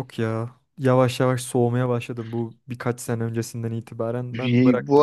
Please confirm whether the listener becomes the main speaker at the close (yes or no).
yes